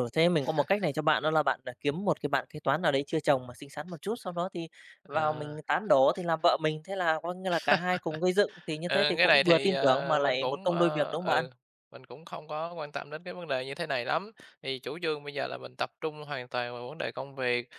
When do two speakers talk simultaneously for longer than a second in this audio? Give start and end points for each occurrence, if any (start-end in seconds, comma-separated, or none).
8.9-11.4